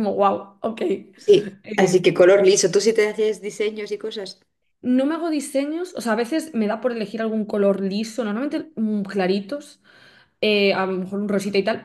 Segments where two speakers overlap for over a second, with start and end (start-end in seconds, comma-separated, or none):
none